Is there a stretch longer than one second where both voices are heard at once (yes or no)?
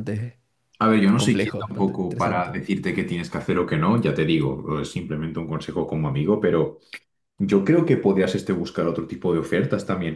yes